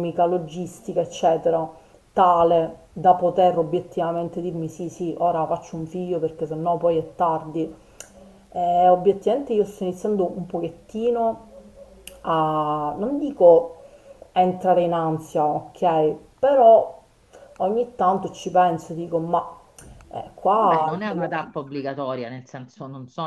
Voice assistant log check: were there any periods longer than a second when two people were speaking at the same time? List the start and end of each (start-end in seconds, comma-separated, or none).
none